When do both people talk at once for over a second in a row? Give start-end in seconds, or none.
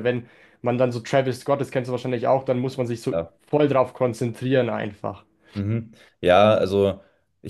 none